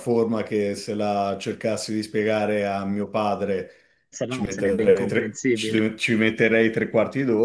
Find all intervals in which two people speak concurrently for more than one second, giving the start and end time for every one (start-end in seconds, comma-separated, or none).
4.3-5.9